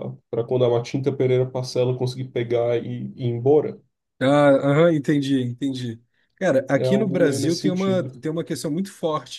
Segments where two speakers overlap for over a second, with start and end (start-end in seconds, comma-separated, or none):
6.8-8.2